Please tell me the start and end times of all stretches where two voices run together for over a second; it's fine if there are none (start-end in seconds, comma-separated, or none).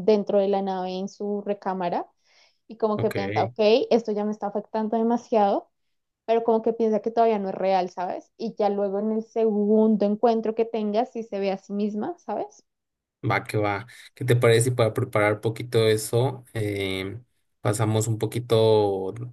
none